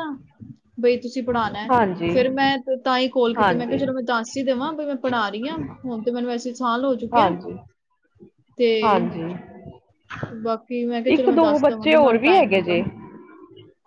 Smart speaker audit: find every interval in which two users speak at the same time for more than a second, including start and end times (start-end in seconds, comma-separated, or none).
11.1-12.9